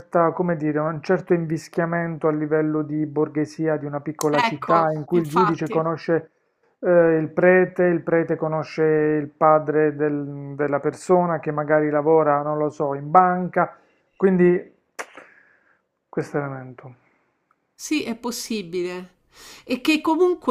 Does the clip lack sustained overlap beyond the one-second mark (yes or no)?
no